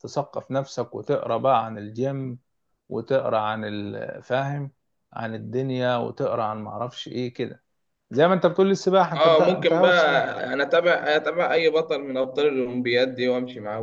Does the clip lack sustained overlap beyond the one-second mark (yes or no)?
no